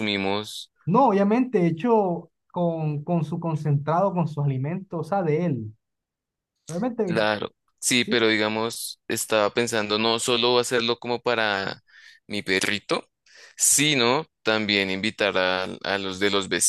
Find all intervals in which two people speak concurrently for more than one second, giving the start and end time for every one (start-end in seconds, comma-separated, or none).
none